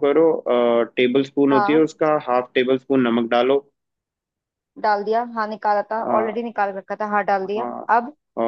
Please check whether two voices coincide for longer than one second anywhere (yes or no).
no